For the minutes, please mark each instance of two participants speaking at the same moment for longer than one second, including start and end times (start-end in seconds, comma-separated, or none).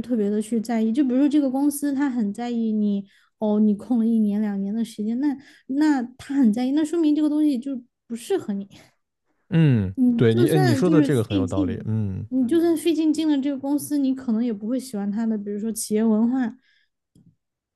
9.9-12.3